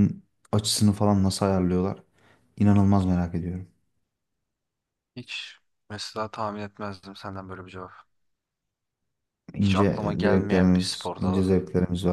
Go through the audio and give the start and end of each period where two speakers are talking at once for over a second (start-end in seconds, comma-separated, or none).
9.6-11.5